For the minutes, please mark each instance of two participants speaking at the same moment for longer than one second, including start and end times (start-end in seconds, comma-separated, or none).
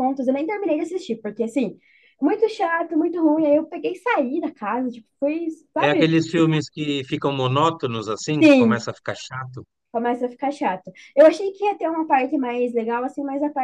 none